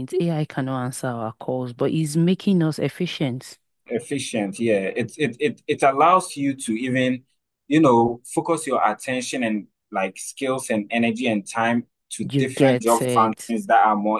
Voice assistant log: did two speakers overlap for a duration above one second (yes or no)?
yes